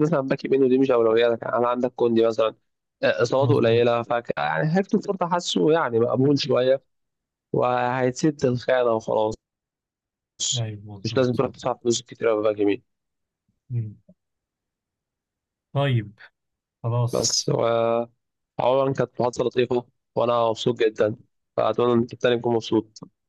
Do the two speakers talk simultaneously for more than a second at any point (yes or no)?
no